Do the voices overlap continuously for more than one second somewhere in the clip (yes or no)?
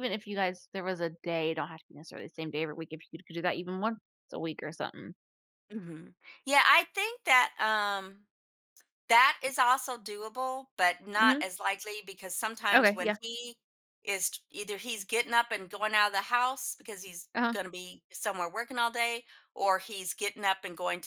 no